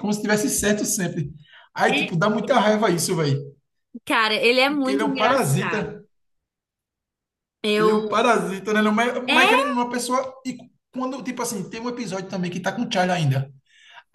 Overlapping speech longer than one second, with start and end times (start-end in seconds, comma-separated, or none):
4.7-6.0